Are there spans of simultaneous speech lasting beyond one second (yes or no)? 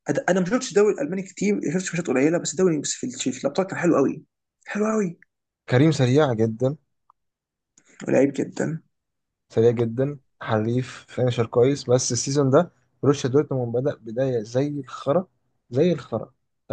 no